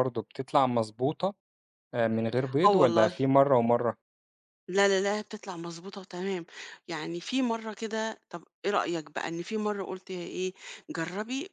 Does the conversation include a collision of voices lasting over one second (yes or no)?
no